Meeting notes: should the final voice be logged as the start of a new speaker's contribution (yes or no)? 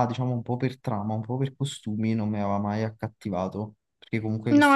yes